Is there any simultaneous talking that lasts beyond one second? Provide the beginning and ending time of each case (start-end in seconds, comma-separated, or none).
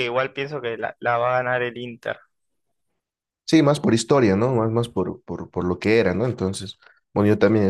none